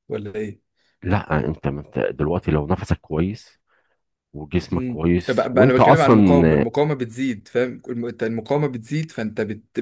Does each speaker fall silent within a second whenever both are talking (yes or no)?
no